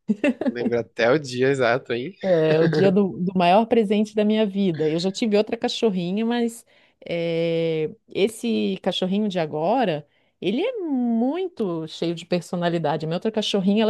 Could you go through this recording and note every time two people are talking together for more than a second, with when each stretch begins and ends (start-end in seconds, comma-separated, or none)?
none